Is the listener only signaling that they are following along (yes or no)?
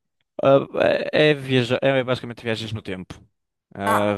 no